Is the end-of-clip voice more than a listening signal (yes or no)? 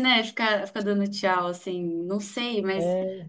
no